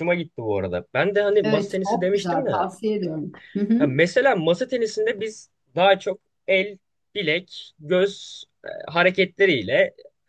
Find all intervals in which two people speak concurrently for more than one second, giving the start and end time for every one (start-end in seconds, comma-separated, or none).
1.4-2.7